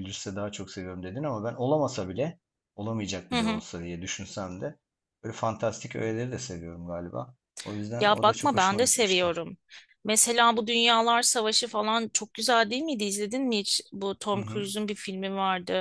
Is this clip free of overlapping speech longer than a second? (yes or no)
no